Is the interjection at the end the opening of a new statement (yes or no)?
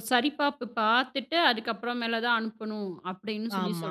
yes